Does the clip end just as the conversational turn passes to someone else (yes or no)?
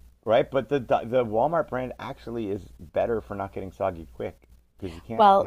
yes